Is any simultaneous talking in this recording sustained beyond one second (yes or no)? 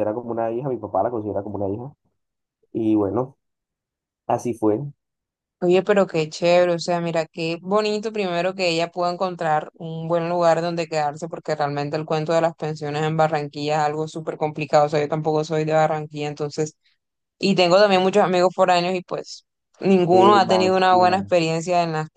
yes